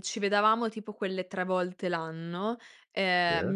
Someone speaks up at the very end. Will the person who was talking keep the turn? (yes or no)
yes